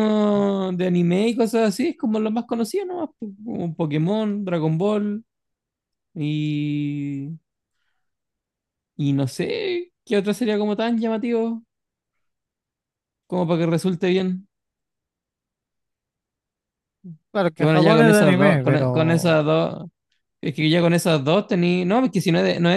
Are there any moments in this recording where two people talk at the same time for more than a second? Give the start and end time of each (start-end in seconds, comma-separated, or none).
17.6-19.4